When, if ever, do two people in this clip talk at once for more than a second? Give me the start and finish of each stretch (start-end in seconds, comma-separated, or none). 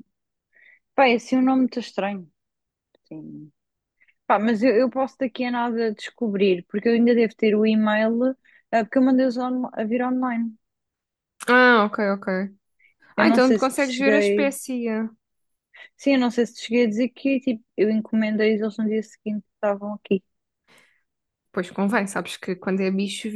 13.2-14.5